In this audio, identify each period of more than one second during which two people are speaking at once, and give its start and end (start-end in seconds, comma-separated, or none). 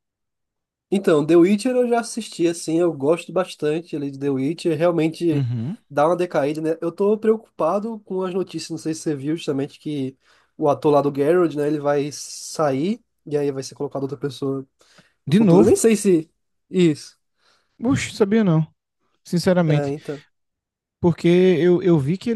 none